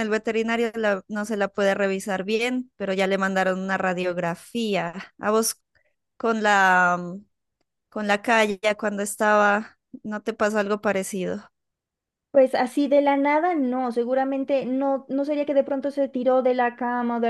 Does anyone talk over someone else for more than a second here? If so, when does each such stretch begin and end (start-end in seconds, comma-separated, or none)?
none